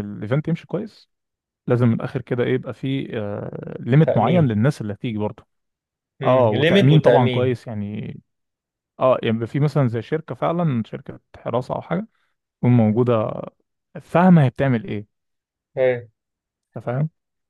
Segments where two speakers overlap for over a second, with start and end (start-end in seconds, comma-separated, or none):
6.2-7.6